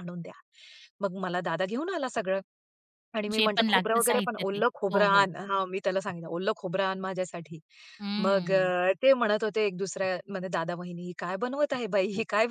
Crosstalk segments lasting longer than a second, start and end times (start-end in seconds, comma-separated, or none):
3.3-5.3